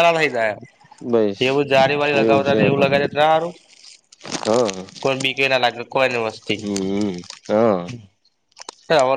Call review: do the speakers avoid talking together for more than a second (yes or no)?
yes